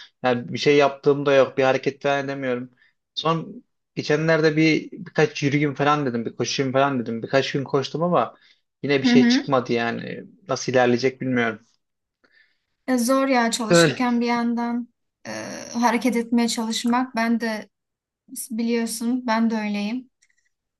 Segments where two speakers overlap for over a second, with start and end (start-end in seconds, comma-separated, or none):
none